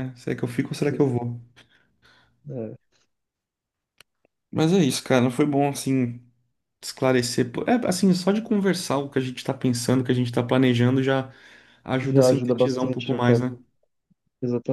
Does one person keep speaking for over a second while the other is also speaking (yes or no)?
yes